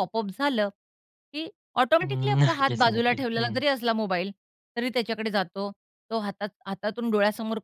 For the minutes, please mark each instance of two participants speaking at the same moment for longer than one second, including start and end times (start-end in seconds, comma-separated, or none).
2.0-3.6